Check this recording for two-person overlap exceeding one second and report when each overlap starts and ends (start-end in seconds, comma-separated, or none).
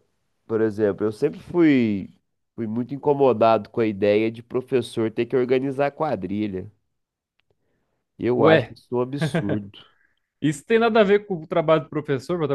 none